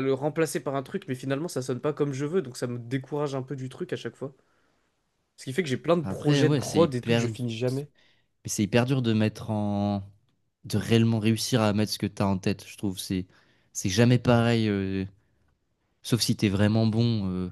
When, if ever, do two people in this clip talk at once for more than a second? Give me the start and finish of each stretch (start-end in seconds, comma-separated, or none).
6.0-7.3